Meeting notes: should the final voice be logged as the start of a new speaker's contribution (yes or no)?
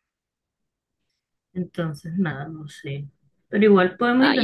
no